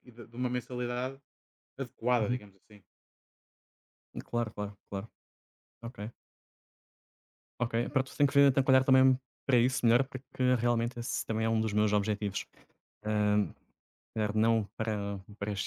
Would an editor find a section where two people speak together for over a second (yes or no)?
no